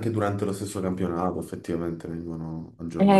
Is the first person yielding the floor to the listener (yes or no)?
yes